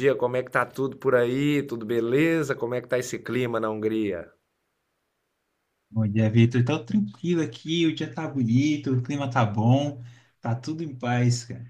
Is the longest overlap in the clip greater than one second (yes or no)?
no